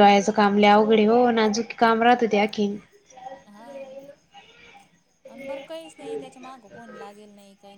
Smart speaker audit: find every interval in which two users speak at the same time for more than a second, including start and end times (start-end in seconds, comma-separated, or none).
none